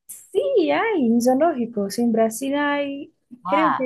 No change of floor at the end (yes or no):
no